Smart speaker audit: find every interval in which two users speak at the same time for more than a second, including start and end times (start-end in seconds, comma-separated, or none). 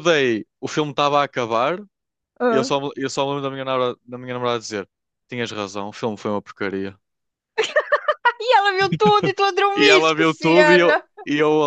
9.8-11.0